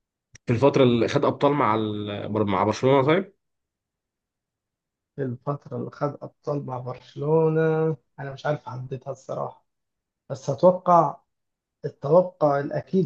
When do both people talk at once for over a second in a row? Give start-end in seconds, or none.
none